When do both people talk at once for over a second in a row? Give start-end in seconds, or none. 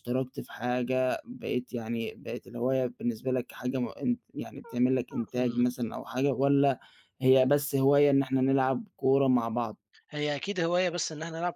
none